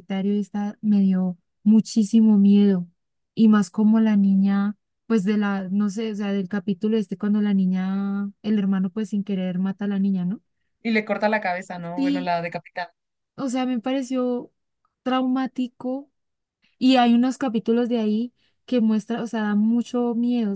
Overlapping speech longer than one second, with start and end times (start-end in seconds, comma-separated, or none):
none